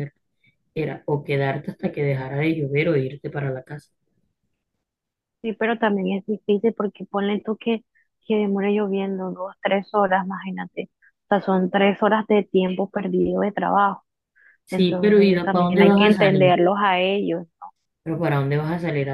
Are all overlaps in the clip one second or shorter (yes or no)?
no